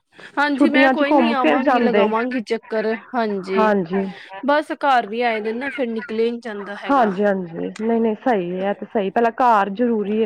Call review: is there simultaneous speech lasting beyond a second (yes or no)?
yes